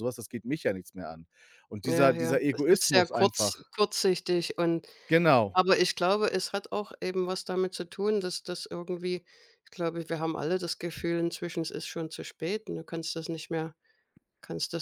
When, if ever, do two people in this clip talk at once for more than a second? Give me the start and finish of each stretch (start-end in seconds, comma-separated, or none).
1.8-3.7